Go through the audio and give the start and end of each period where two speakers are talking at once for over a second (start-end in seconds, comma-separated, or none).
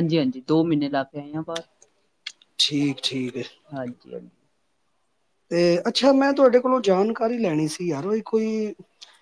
none